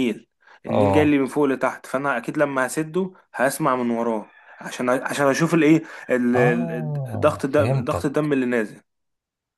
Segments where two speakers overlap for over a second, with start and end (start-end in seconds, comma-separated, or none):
6.3-8.3